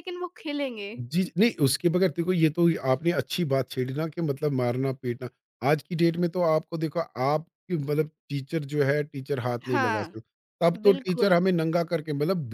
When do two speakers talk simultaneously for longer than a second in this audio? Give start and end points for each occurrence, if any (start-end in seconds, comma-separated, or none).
none